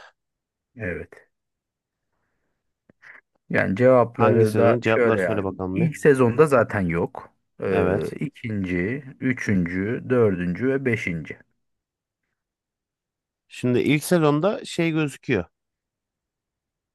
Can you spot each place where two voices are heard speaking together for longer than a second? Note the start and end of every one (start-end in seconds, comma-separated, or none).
4.1-5.9